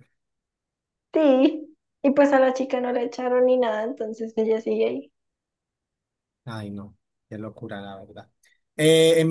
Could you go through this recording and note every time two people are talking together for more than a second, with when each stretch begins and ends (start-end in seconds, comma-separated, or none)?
none